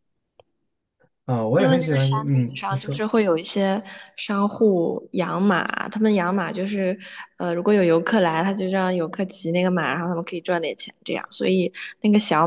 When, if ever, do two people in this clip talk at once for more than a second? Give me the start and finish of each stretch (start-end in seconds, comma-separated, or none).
1.6-3.0